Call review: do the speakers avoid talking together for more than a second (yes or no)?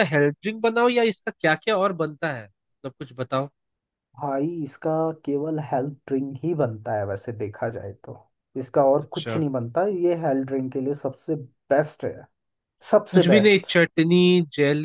yes